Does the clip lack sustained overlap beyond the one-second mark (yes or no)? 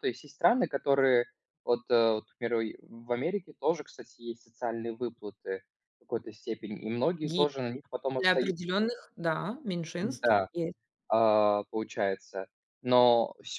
yes